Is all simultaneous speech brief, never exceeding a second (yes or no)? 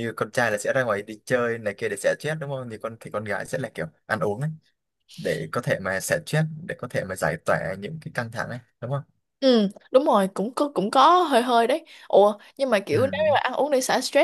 yes